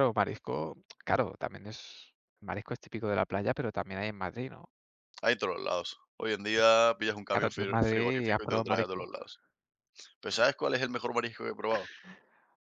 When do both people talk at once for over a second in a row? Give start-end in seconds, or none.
7.3-9.1